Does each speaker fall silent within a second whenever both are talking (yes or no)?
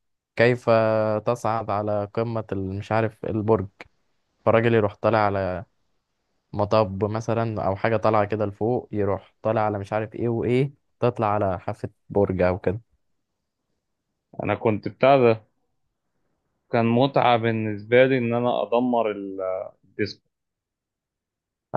yes